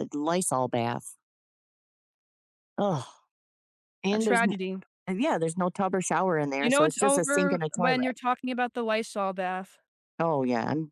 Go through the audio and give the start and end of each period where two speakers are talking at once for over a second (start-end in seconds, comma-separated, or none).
6.6-8.1